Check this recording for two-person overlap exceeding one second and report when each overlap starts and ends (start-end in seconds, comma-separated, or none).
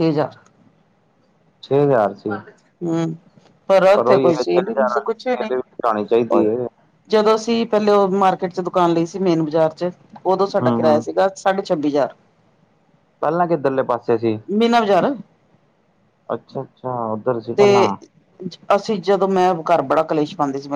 4.1-6.5